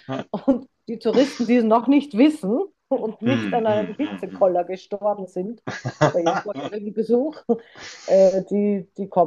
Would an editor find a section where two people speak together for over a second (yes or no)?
yes